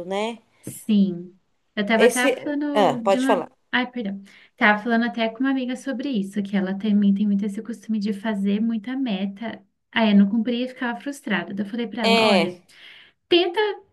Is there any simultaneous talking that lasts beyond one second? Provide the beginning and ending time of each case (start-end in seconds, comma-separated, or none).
2.0-3.5